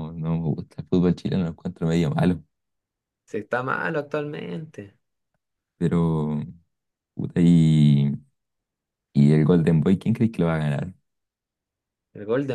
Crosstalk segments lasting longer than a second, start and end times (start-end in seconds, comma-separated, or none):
none